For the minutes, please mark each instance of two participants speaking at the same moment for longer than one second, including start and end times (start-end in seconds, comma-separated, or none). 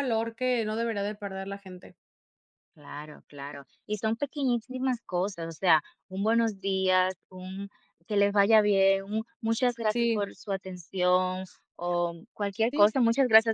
none